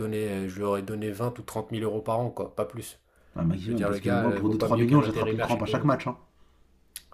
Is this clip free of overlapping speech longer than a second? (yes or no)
no